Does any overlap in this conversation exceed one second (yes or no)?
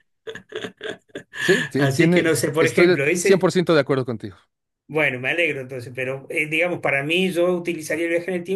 yes